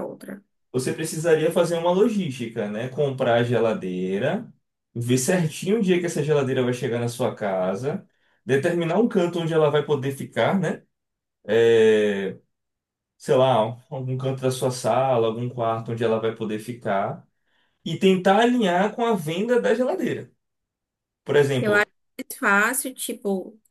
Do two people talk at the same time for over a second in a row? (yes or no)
no